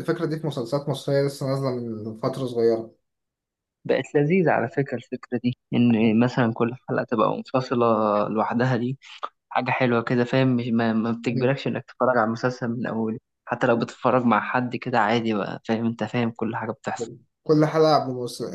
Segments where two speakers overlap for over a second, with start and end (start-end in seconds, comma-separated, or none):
none